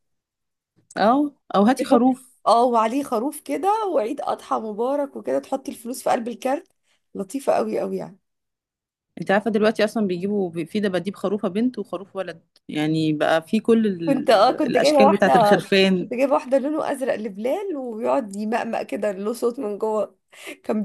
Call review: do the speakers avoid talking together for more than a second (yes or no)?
no